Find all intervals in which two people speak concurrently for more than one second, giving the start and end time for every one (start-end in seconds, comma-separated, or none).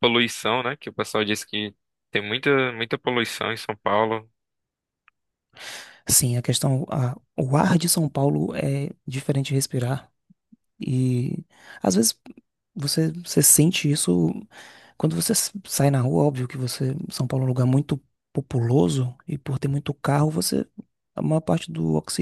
none